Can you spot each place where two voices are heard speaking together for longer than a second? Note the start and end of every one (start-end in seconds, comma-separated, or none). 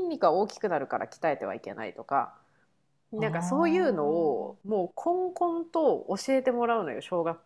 3.1-4.7